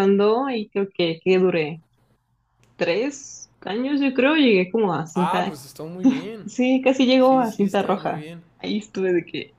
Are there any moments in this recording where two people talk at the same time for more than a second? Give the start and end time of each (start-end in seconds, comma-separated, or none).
7.2-8.4